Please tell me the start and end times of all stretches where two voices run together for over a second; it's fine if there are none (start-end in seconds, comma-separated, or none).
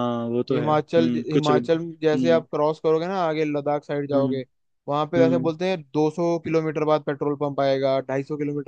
0.5-2.4